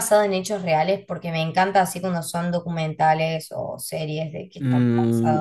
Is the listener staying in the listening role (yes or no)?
no